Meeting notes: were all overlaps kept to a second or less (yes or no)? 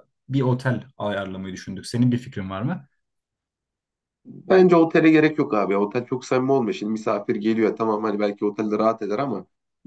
yes